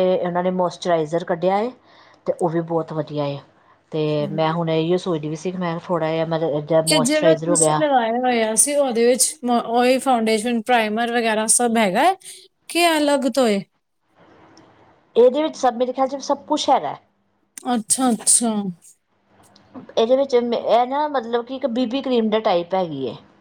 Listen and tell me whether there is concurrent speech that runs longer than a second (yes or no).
no